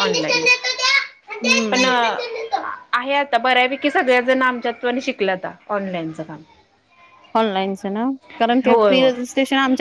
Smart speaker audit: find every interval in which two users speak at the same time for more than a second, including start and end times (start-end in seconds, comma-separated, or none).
none